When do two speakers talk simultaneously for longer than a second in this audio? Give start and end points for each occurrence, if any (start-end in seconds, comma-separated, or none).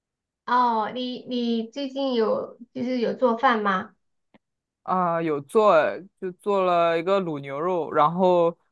none